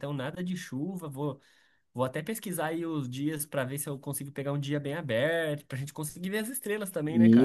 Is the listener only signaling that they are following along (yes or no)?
no